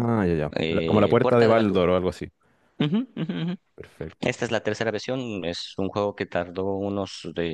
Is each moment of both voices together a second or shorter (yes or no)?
no